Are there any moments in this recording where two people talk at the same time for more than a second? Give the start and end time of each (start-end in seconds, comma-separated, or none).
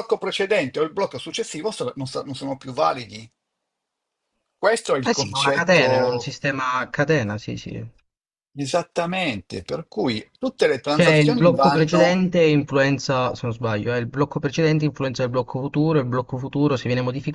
5.0-6.3, 10.9-12.2